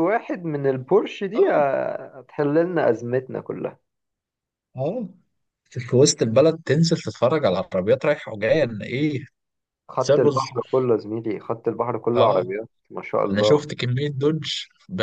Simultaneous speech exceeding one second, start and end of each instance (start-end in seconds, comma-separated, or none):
none